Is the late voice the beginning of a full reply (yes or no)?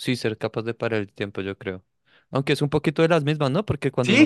yes